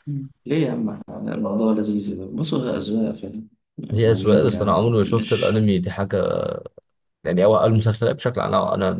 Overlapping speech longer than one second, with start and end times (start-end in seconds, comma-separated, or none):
4.0-5.6